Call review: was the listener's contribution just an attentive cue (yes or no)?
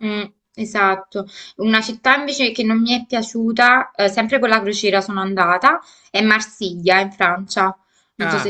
no